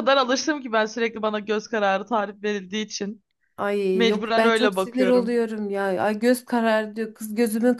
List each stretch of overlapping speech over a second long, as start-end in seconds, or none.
3.9-5.4